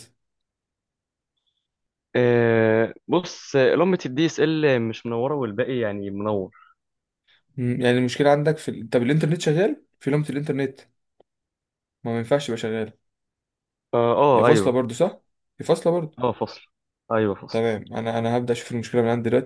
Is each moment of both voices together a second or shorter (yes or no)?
yes